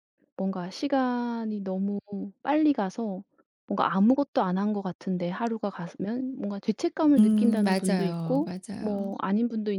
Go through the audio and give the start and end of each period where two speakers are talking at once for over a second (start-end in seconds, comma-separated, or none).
7.2-9.1